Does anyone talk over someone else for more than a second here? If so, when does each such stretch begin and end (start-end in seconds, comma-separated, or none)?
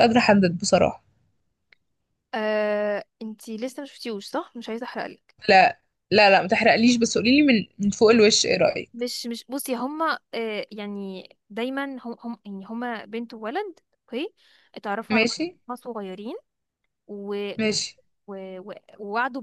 none